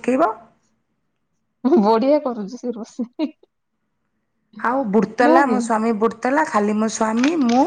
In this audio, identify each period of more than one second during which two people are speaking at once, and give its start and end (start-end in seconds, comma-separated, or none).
none